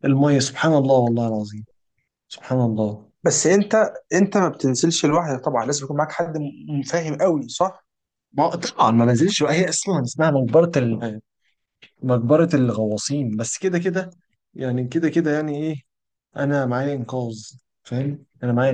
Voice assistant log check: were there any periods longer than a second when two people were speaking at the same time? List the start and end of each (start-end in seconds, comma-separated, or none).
none